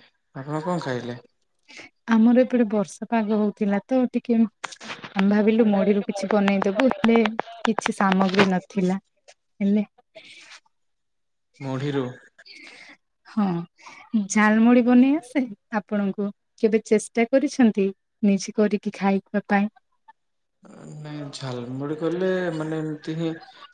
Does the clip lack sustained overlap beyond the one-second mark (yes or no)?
yes